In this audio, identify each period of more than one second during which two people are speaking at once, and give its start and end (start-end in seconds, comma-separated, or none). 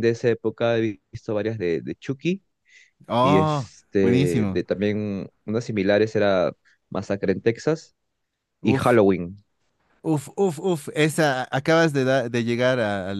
3.2-4.6